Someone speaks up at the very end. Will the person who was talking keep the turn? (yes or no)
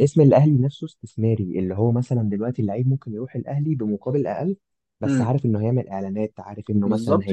no